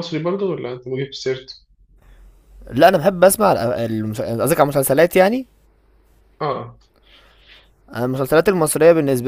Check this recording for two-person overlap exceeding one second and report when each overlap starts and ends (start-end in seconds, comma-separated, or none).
none